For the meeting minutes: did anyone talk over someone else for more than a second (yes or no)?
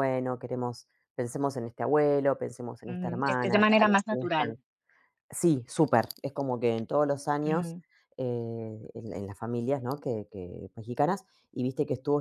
yes